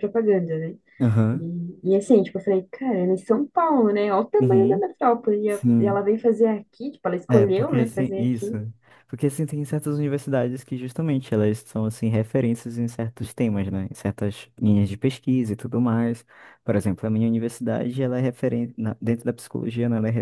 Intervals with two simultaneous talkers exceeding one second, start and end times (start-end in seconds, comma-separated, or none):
7.3-8.5